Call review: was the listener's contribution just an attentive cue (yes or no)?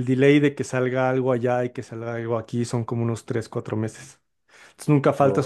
yes